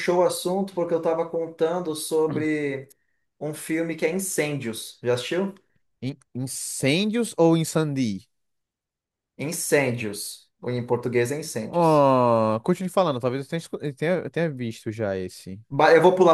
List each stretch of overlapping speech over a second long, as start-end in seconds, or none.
none